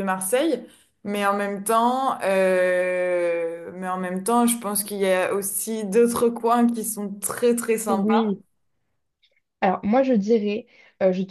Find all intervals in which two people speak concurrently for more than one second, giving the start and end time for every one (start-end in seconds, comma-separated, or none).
none